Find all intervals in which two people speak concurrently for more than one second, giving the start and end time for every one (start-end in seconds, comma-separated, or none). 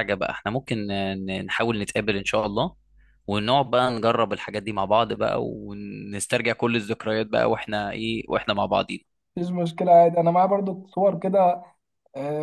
none